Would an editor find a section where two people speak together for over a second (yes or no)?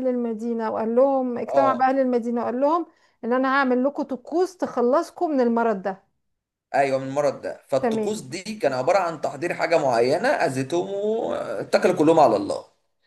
no